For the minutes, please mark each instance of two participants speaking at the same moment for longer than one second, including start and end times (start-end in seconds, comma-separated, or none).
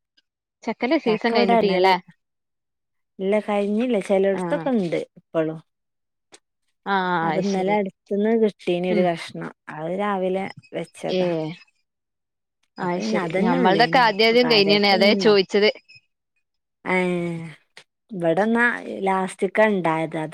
12.8-15.4